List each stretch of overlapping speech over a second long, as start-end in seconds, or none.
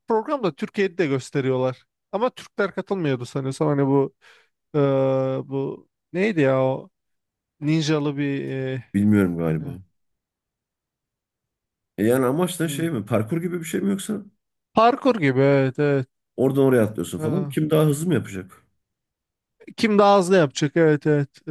none